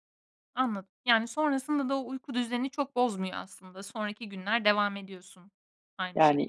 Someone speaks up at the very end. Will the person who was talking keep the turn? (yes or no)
no